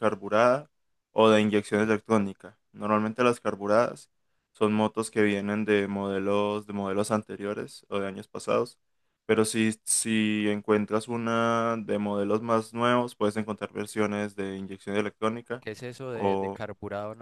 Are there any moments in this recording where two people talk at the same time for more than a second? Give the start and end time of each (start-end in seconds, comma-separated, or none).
none